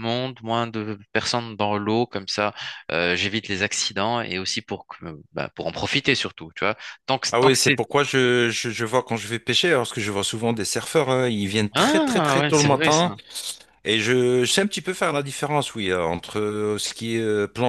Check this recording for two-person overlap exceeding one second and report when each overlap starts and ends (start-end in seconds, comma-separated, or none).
11.7-13.1